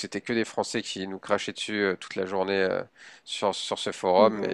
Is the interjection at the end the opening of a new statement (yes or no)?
no